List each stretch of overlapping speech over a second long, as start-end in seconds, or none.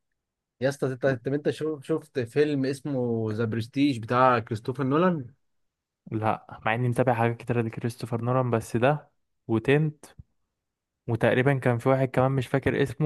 none